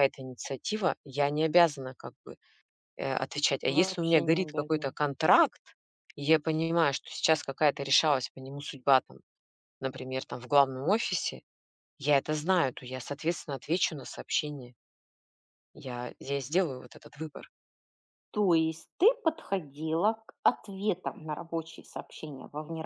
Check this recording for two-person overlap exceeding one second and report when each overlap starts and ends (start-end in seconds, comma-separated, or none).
3.7-5.0